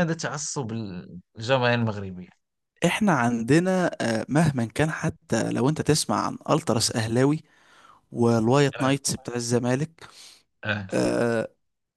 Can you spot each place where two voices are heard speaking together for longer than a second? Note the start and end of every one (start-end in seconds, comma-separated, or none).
none